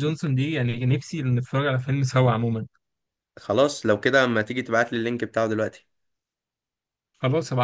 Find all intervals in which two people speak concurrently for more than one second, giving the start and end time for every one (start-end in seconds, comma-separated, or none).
none